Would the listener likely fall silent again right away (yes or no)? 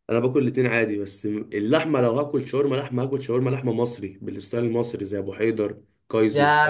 no